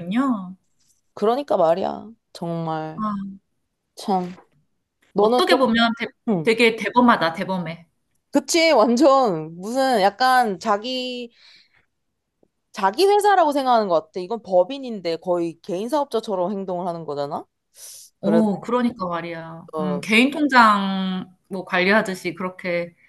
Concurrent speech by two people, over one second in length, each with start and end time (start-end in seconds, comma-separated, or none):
none